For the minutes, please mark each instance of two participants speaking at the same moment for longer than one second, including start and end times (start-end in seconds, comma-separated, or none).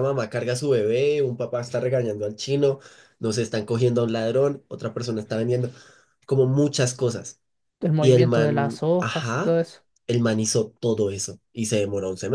8.0-9.6